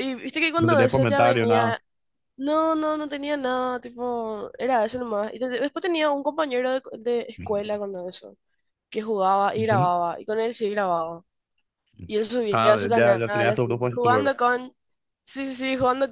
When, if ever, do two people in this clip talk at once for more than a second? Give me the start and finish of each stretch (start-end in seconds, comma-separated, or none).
0.6-1.8, 12.5-14.3